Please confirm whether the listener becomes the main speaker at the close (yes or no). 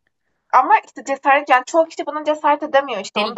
yes